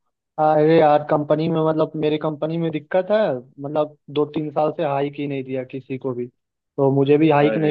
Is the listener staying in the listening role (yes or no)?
yes